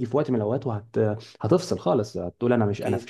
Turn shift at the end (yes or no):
no